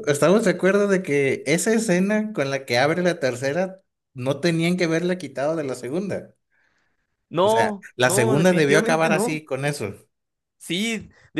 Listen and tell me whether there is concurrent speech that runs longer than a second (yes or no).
yes